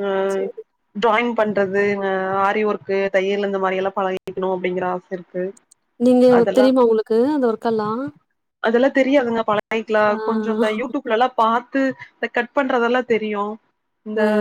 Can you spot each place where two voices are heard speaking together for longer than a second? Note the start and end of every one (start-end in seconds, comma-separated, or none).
none